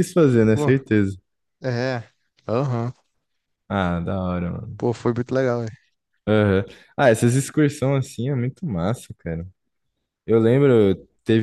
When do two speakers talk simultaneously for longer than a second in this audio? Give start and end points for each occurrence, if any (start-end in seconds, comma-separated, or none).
none